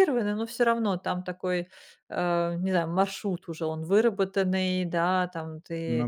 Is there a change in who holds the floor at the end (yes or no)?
no